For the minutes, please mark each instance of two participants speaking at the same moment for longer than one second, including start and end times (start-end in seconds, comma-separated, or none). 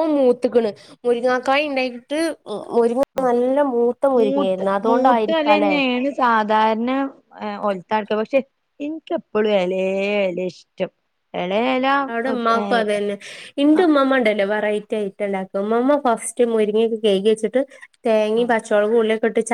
4.2-5.7